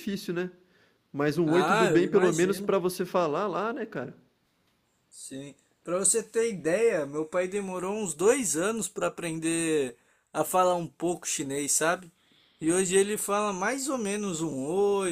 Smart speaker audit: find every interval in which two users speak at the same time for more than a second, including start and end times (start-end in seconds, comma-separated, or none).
1.4-2.8